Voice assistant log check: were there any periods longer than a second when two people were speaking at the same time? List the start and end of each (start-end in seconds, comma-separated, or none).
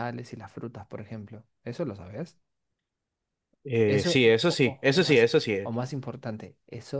3.9-5.6